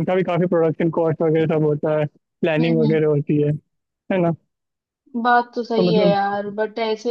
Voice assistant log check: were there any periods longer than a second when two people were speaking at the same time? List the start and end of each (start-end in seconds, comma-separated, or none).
none